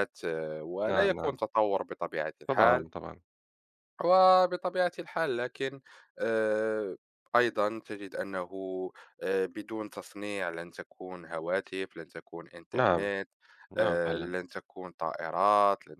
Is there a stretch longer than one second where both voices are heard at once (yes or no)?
no